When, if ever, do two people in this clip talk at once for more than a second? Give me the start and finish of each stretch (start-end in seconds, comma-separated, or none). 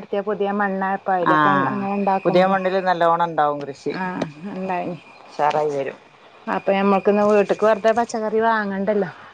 none